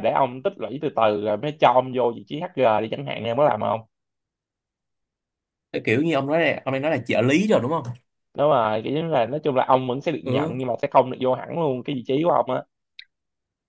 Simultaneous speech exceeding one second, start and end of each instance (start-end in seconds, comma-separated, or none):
none